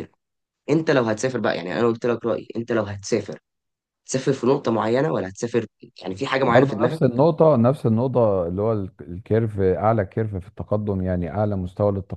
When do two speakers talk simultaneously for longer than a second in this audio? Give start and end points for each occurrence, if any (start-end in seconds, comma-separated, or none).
none